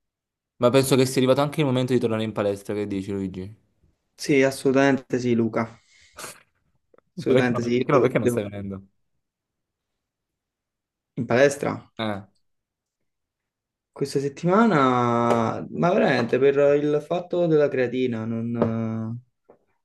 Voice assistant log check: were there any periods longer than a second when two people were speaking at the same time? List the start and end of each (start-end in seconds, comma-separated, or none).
7.2-8.4